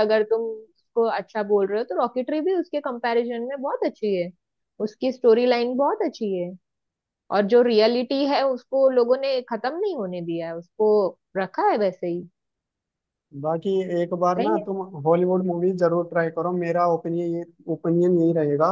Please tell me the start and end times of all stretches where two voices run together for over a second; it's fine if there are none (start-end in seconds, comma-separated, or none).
none